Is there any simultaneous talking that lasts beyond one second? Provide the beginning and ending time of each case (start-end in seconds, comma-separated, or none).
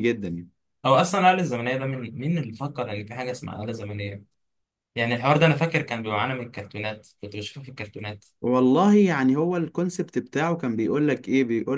none